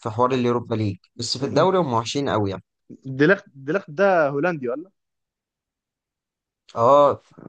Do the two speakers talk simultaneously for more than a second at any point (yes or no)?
no